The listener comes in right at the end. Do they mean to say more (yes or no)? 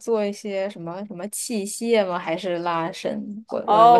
yes